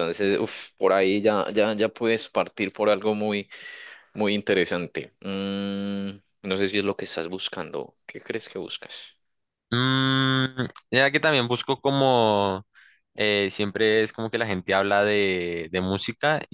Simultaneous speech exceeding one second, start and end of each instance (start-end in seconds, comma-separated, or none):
none